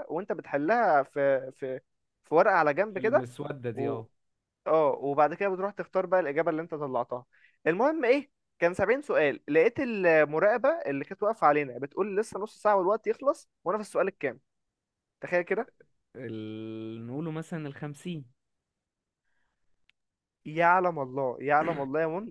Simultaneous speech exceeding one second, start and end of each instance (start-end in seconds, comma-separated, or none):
none